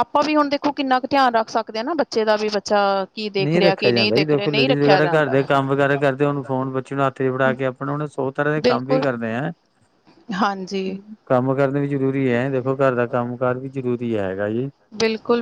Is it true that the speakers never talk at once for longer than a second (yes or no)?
no